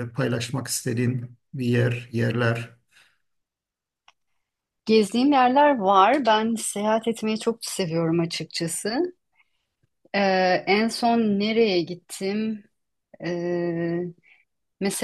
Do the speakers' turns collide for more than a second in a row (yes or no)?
no